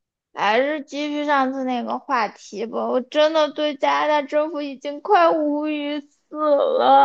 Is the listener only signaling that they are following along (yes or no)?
no